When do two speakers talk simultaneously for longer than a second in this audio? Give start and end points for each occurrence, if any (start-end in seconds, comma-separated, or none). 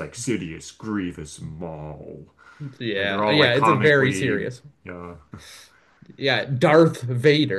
3.0-4.5